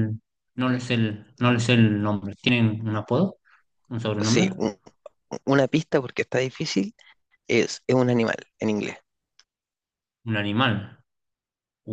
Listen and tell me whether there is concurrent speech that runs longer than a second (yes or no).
no